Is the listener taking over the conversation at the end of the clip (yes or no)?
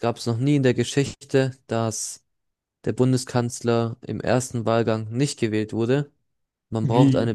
no